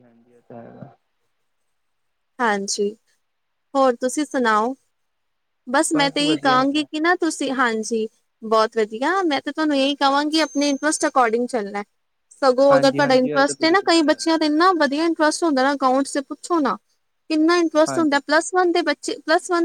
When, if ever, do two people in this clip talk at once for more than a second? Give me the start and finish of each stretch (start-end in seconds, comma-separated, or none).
12.5-14.4